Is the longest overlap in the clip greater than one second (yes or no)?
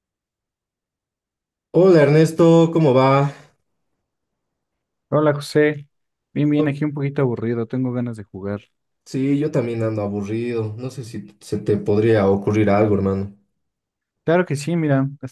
no